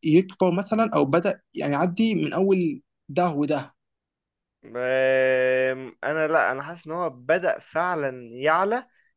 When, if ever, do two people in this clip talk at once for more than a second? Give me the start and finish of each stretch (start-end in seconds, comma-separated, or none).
none